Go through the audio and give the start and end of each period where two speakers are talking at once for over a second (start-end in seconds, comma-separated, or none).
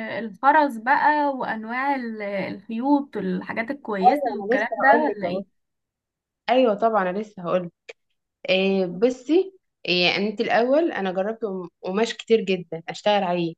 4.0-5.4